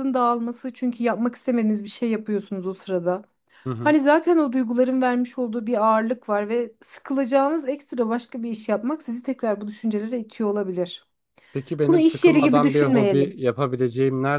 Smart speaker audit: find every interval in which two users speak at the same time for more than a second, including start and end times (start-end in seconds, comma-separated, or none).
11.9-13.3